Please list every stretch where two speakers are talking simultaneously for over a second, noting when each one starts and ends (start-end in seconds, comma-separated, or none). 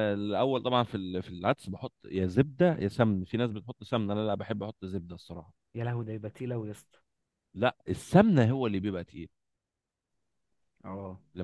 none